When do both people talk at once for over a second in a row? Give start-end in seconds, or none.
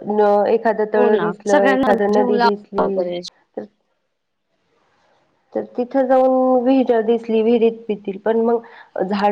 0.9-2.9